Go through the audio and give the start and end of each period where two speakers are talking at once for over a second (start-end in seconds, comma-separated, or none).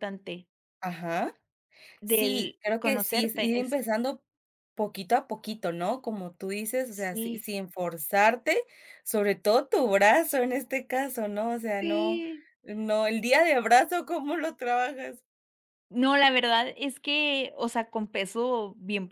2.0-3.8